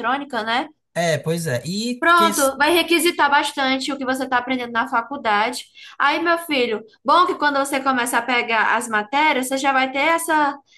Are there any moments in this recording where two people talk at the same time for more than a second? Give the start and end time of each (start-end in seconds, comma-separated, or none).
none